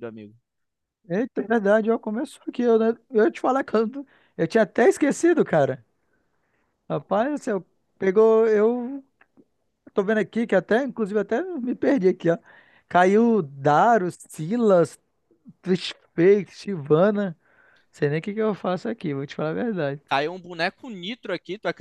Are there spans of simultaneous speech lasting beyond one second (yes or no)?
no